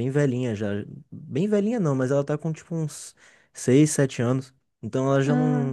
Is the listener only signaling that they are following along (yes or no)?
yes